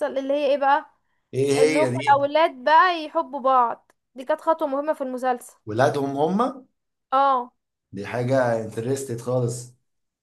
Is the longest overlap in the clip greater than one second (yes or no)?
no